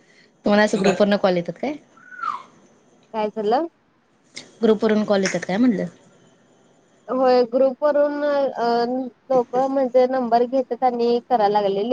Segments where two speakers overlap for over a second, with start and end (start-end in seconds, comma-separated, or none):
none